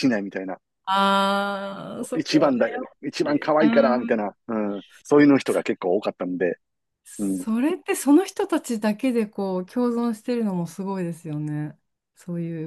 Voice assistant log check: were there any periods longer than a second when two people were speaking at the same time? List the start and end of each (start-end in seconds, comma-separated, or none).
2.2-4.1